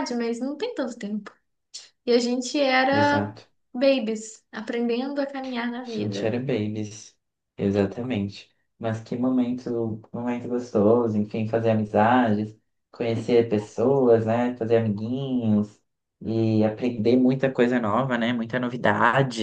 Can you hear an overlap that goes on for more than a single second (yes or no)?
no